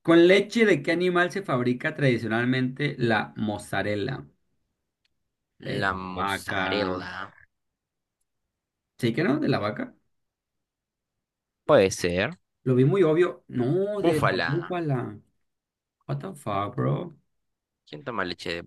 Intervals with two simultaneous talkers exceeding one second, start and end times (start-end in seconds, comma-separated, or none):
5.8-7.0